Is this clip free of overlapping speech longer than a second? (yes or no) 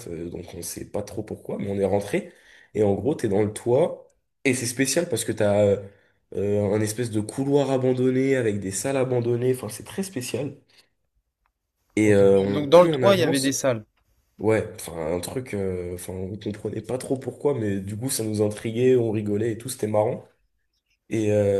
no